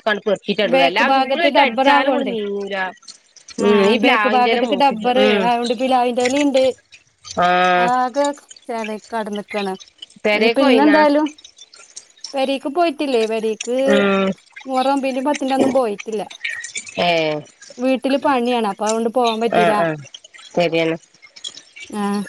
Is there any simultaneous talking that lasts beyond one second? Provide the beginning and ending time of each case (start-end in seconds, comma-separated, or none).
0.7-2.3